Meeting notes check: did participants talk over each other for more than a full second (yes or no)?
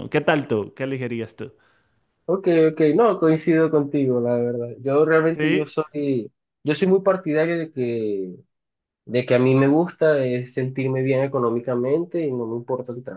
no